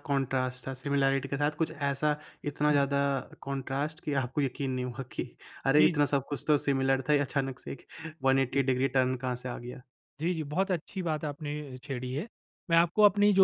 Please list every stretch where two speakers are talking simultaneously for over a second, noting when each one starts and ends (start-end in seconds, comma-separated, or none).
none